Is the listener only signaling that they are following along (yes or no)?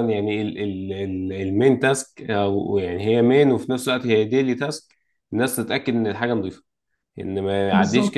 yes